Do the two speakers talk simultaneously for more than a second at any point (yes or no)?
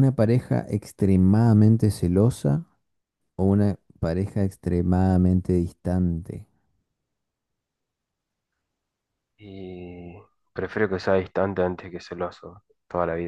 no